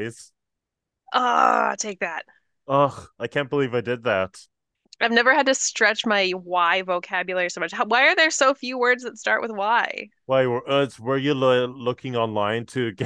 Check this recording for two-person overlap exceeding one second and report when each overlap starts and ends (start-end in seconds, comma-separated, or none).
none